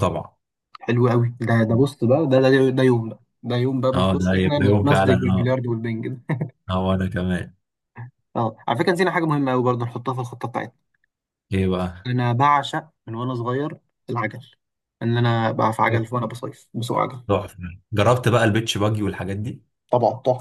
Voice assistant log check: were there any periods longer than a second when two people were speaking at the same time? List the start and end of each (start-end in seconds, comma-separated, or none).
3.9-5.5